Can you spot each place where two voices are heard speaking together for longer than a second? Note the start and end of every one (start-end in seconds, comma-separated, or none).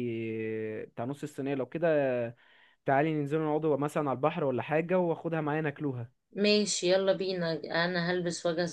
none